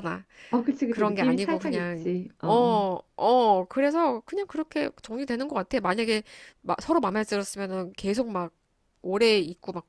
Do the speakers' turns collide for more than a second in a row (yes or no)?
yes